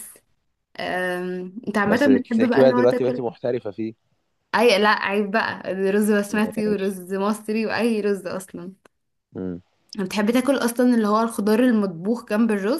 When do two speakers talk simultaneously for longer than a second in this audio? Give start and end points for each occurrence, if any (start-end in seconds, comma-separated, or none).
1.8-3.2